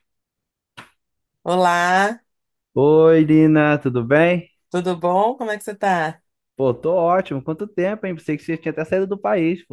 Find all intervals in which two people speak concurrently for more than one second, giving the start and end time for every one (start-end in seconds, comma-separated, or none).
none